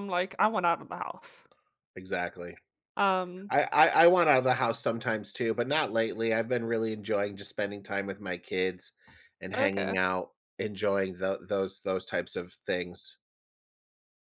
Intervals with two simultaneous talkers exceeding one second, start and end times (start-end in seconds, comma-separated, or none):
none